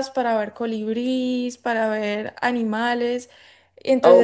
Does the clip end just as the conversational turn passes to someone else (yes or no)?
no